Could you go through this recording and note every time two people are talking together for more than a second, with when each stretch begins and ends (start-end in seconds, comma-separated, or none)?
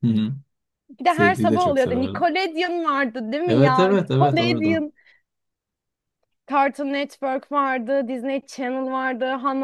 1.1-2.3, 3.5-4.8